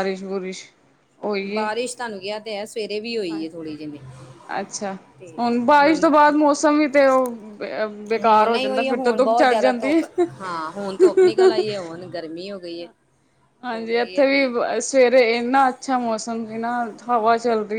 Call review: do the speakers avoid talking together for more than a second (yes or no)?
no